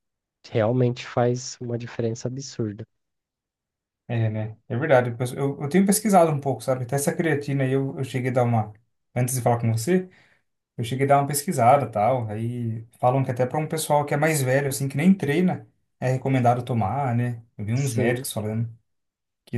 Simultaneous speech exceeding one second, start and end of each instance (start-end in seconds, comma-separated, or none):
none